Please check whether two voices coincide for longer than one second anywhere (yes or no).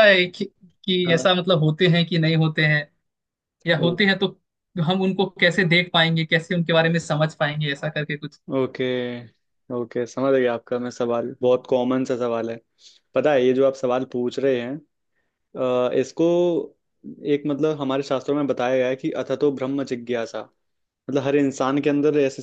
no